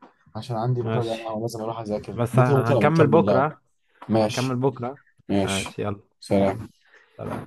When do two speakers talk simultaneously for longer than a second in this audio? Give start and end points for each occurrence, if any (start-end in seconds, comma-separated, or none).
2.1-3.5